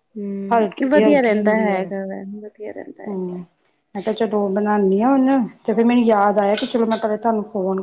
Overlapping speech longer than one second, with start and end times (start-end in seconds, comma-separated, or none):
0.5-1.9